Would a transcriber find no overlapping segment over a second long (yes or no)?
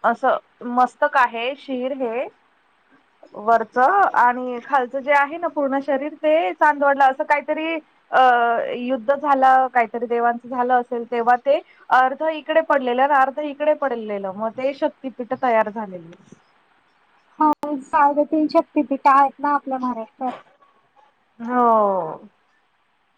yes